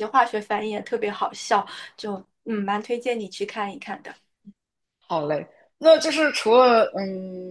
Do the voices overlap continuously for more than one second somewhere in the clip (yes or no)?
no